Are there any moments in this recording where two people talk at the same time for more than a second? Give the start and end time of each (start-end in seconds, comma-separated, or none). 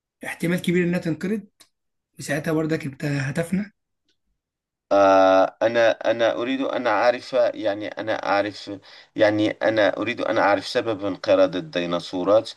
none